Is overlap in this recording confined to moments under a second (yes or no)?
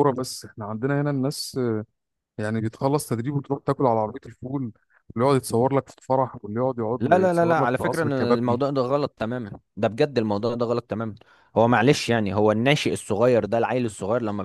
no